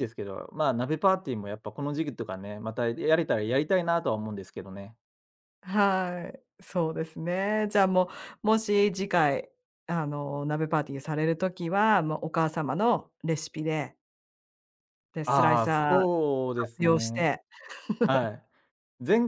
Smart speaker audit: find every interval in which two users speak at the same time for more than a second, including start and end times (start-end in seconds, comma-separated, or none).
15.2-17.3